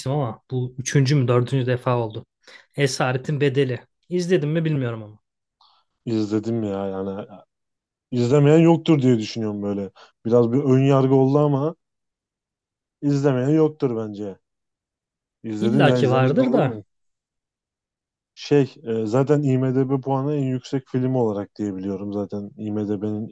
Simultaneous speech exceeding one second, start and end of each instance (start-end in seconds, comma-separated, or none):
15.6-16.8